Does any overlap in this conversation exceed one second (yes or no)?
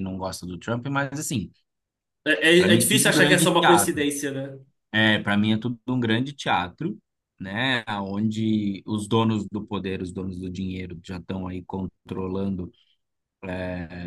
yes